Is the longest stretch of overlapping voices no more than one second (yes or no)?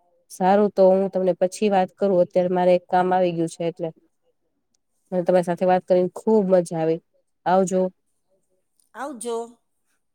no